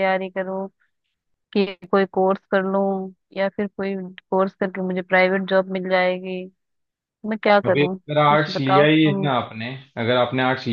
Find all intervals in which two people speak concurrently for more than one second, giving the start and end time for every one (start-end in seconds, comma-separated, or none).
7.7-9.3